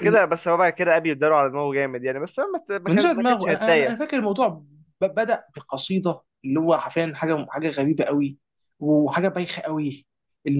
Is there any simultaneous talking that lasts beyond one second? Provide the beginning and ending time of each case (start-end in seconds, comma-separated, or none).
2.9-4.1